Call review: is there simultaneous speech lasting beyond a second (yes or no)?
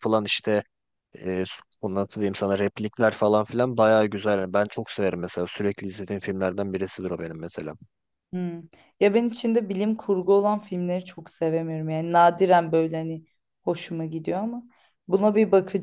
no